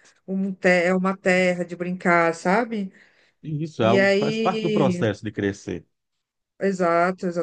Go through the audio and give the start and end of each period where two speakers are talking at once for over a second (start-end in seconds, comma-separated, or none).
3.8-5.0